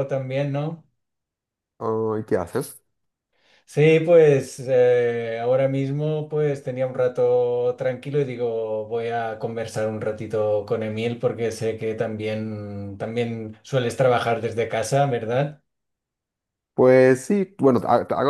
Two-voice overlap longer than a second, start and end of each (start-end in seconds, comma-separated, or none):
none